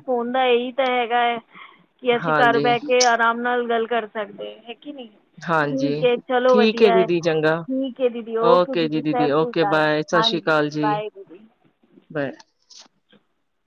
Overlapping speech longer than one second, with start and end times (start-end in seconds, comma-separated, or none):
9.0-11.0